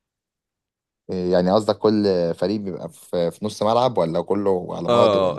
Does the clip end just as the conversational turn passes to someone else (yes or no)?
yes